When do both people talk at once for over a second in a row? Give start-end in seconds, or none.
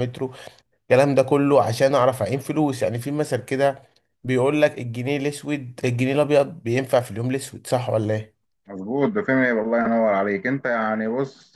none